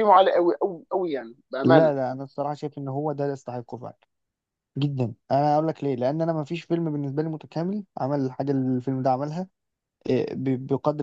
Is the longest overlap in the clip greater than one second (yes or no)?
no